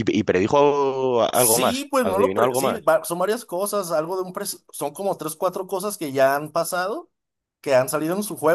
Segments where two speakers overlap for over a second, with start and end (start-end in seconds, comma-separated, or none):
1.3-2.9